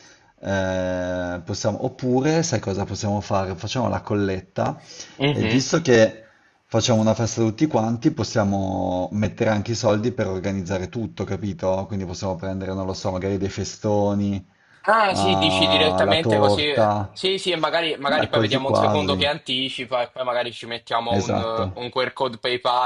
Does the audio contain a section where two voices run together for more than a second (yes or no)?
yes